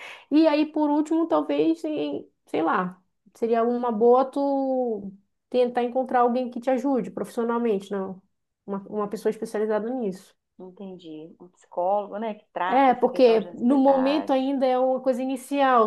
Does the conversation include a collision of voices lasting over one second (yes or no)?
yes